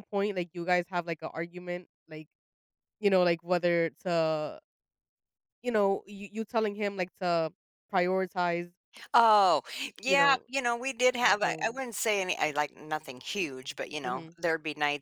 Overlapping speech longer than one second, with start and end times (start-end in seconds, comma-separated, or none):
none